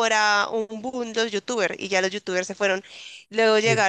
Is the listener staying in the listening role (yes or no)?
yes